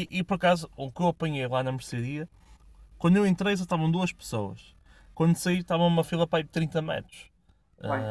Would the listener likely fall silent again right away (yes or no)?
yes